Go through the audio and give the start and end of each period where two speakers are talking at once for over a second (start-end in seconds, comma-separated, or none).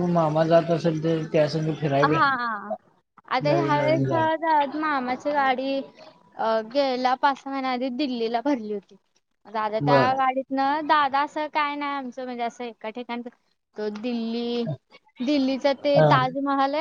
none